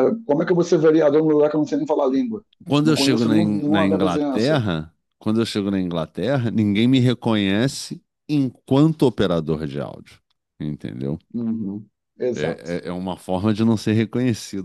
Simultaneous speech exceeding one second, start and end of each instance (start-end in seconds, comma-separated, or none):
2.8-4.6